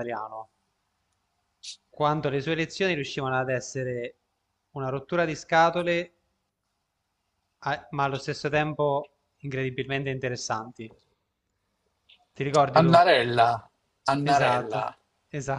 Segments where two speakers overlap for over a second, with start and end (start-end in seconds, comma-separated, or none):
none